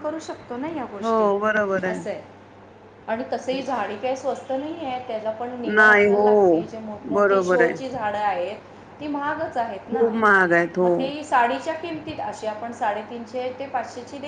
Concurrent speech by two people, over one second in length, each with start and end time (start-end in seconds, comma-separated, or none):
none